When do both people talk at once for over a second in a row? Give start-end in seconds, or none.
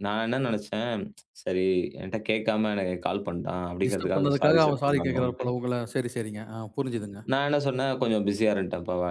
3.8-5.5